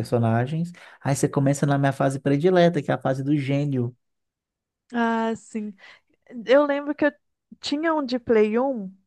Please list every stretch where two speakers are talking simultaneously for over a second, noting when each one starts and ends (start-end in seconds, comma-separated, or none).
none